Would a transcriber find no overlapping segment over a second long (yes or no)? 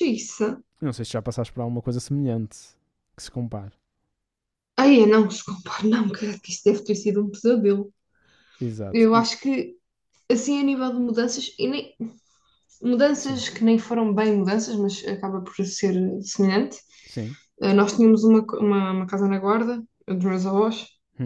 yes